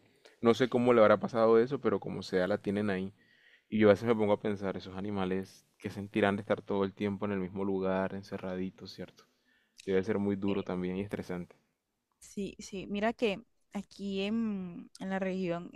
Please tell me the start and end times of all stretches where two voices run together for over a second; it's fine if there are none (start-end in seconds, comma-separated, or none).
none